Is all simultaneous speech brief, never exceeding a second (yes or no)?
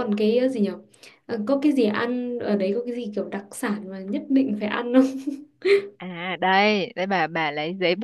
yes